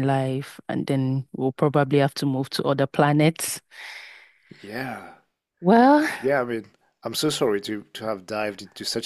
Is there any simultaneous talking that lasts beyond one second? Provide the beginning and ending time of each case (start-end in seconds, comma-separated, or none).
none